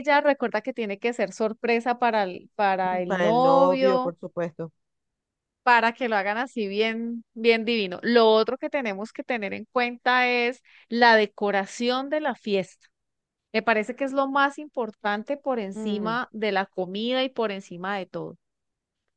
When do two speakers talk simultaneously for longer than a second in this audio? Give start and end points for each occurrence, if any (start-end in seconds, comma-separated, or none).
2.9-4.1